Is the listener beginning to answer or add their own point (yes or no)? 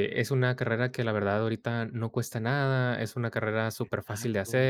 no